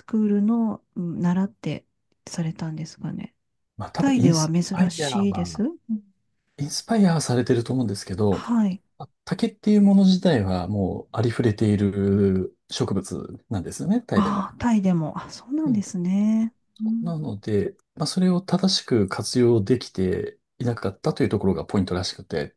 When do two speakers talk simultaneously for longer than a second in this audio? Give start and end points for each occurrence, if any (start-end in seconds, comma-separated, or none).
4.0-5.6